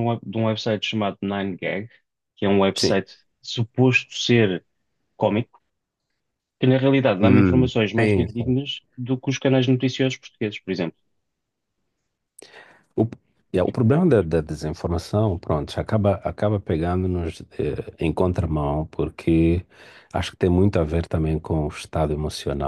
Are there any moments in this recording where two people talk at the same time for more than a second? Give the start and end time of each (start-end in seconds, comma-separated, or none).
7.2-8.6